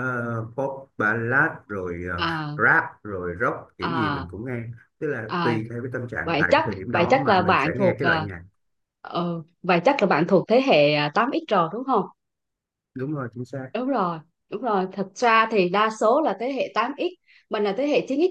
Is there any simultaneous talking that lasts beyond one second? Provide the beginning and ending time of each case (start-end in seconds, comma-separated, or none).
6.2-8.3